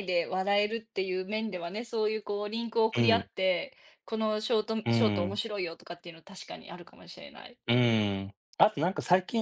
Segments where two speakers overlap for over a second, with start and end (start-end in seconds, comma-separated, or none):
none